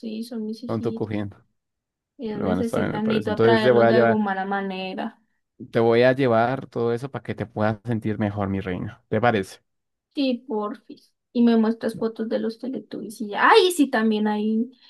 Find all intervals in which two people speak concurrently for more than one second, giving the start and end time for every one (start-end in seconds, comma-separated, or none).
2.3-4.2